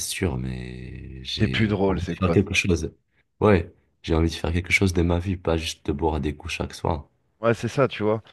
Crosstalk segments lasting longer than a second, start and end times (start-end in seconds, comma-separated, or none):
1.4-2.6